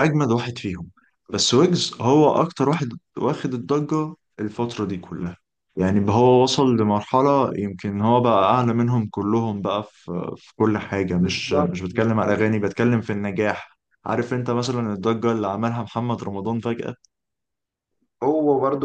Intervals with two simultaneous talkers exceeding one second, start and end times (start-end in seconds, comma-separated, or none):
11.1-12.5